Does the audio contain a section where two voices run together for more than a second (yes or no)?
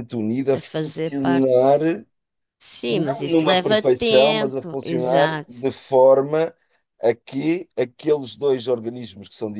yes